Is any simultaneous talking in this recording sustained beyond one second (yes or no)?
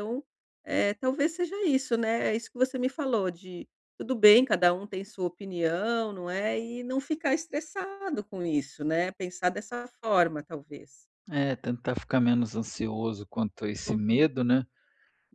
no